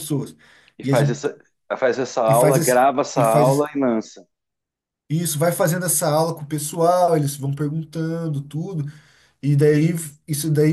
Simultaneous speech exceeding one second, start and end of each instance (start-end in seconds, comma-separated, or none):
2.3-3.7